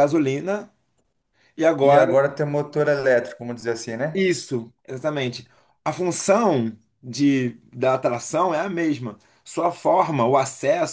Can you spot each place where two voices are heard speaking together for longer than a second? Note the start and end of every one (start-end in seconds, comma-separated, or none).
none